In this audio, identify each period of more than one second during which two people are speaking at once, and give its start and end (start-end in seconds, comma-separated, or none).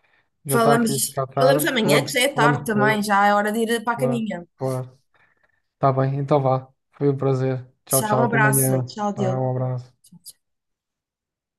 0.5-3.1, 7.9-9.4